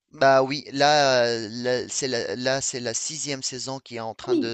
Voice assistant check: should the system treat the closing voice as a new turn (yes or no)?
no